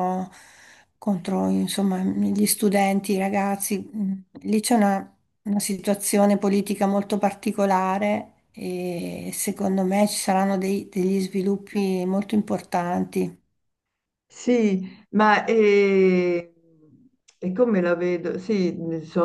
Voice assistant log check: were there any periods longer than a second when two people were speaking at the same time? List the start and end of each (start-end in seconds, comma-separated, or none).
none